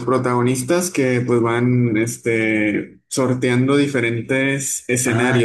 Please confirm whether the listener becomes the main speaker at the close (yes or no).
yes